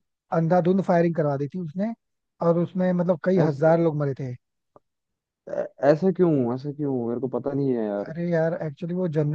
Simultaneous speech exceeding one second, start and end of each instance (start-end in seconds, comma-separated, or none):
none